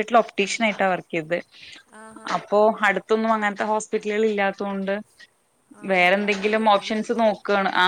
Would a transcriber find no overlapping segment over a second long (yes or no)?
no